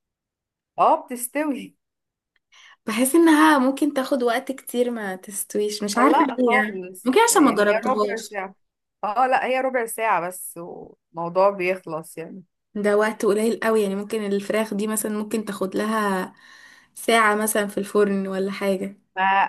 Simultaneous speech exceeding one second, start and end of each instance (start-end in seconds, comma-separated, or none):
6.0-8.4